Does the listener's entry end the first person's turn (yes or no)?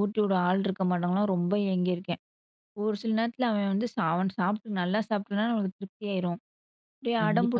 yes